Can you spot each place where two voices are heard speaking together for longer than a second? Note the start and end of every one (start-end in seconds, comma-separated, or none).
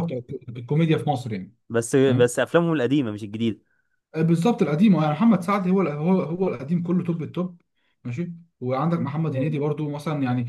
none